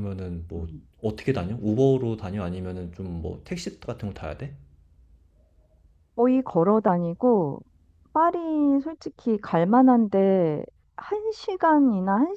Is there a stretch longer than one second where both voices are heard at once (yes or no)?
no